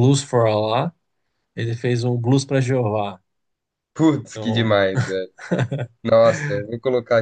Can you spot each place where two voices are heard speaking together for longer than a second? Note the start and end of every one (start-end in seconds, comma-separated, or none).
none